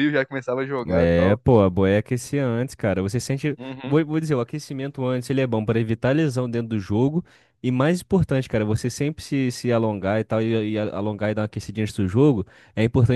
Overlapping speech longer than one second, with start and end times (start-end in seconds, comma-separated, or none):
none